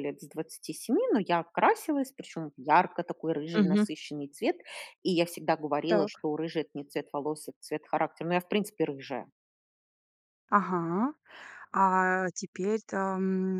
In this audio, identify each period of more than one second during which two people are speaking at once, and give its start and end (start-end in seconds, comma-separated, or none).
none